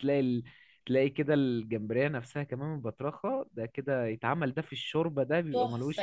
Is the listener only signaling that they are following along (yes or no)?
no